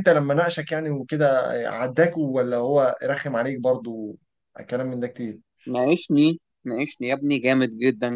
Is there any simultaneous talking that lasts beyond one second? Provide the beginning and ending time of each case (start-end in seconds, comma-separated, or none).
none